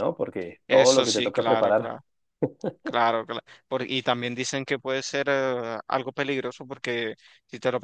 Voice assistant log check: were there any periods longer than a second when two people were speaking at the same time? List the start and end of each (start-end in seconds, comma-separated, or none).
0.7-2.0